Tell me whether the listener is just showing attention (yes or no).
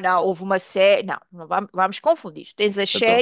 yes